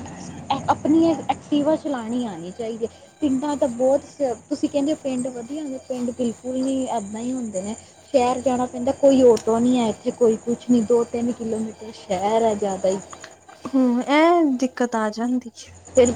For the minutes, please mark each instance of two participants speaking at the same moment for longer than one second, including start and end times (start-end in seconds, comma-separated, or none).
none